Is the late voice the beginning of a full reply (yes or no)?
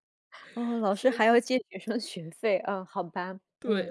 yes